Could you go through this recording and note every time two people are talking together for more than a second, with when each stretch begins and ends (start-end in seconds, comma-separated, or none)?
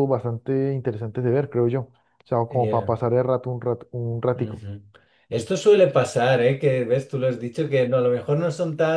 none